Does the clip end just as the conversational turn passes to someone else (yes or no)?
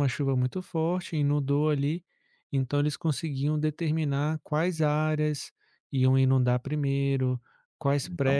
no